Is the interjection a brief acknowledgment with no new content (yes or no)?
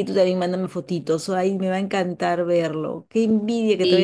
yes